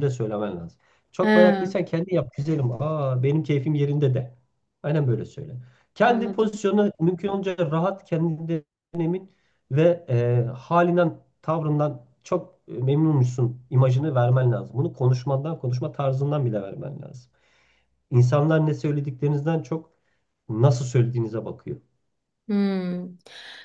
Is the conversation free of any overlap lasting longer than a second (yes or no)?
yes